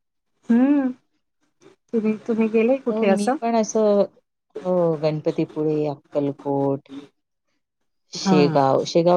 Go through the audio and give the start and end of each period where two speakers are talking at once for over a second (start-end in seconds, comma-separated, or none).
none